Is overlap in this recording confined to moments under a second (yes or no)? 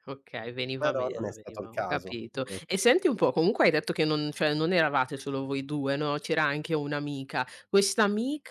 no